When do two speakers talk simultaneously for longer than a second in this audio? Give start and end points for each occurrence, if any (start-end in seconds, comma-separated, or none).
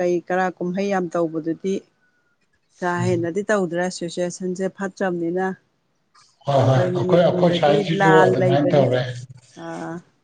6.7-8.8